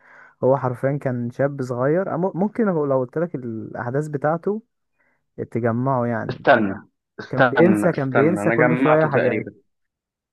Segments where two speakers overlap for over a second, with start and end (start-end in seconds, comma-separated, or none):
7.3-9.5